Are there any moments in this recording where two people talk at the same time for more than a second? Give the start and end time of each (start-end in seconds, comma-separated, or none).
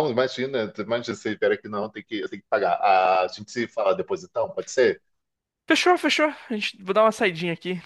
none